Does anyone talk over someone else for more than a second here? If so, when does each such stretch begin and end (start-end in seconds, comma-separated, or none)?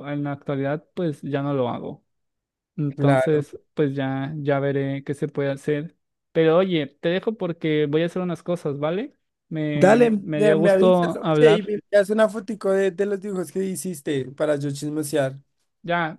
9.7-11.7